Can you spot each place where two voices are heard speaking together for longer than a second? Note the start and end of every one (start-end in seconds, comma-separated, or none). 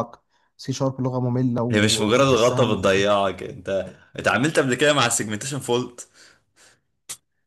1.7-3.0